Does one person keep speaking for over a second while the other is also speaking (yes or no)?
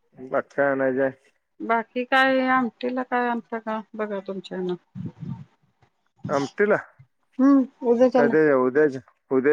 no